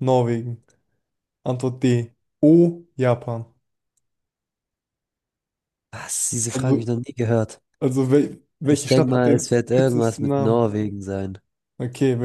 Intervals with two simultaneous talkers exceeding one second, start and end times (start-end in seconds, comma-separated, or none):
8.7-10.7